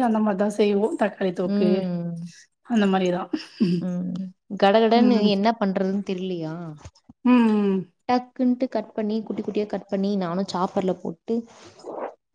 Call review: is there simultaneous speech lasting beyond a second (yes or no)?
no